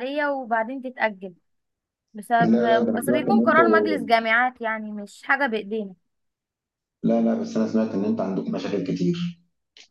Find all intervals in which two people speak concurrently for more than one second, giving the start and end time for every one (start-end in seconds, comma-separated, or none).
2.4-4.0